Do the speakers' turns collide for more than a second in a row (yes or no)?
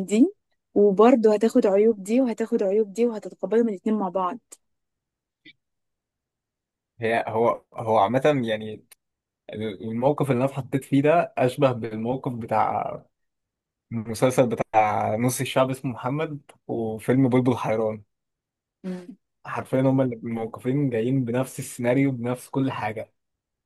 no